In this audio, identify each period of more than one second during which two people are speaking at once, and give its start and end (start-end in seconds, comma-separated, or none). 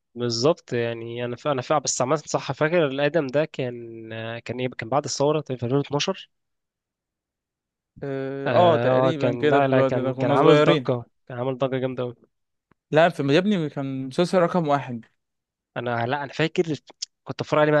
8.5-10.9